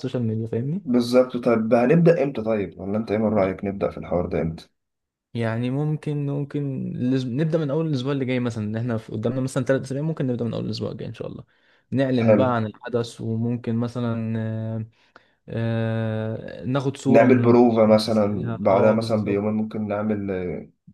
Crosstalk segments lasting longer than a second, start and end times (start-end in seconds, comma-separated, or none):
17.1-19.4